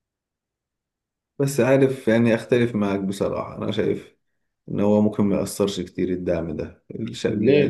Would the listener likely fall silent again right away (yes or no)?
yes